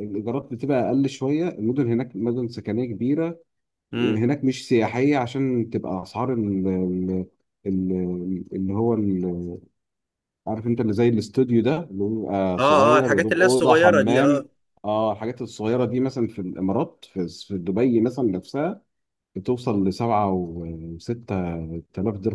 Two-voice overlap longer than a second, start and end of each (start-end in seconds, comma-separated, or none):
12.6-14.4